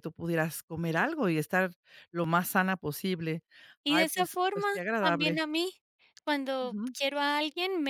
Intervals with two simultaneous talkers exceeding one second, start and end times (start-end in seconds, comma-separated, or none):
3.9-5.4